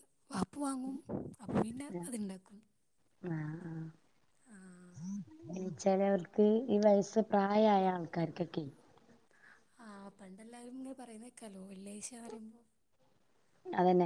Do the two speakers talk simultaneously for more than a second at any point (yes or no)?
no